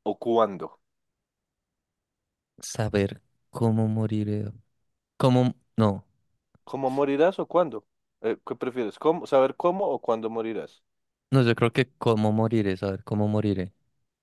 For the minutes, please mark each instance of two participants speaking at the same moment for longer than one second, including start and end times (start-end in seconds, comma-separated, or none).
none